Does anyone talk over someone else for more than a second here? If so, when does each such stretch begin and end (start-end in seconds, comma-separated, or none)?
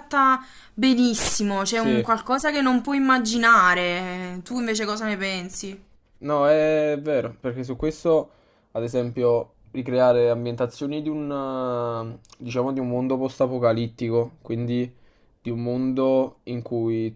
none